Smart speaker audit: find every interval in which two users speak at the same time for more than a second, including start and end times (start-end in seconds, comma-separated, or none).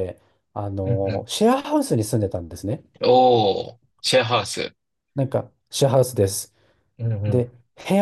none